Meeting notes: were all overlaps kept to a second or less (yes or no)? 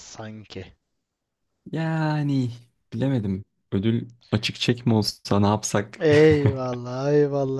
yes